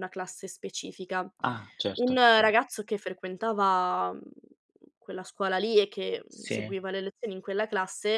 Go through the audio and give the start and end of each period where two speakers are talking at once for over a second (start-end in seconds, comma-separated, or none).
none